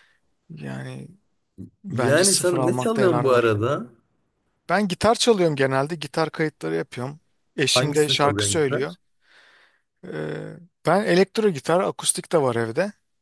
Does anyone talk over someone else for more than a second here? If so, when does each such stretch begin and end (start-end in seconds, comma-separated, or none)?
1.9-3.5, 7.8-8.9